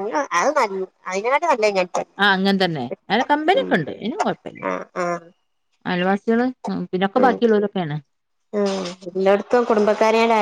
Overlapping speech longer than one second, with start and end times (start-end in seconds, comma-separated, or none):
none